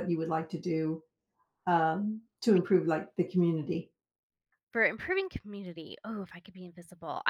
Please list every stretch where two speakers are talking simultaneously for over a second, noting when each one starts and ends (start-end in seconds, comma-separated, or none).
none